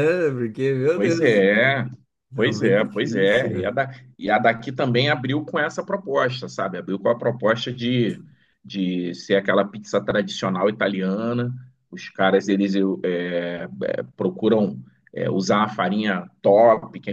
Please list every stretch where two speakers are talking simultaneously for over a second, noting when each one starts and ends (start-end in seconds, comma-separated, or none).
2.4-3.7